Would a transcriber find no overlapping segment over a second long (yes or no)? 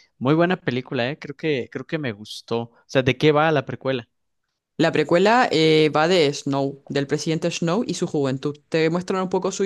yes